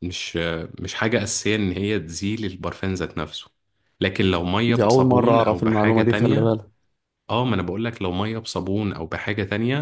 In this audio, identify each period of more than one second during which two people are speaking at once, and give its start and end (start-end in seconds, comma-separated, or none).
4.7-6.6